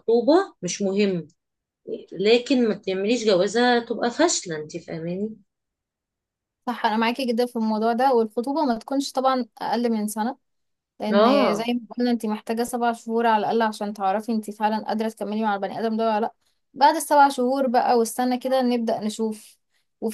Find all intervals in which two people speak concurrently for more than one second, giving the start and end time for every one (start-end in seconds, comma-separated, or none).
none